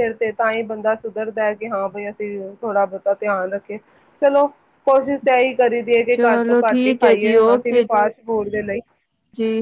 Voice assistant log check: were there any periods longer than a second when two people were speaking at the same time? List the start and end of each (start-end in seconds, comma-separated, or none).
6.2-7.8